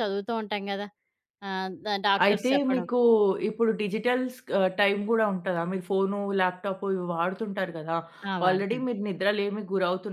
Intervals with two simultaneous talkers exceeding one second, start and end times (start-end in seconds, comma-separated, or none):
none